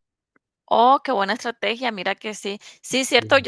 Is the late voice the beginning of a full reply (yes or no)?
no